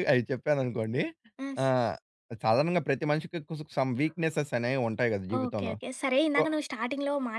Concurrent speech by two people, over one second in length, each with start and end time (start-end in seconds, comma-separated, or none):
none